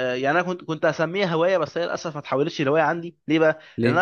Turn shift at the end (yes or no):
no